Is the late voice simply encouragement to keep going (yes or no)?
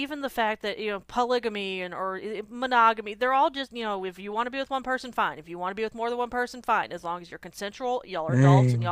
yes